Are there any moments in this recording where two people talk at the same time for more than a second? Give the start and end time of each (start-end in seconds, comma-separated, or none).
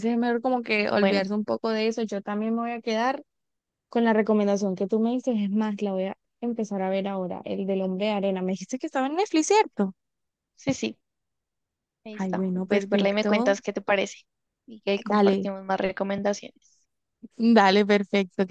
12.2-13.6